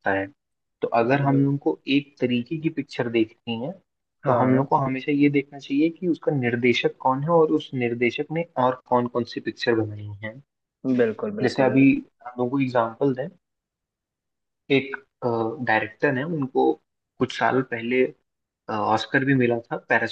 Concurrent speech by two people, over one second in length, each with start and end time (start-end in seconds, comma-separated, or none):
none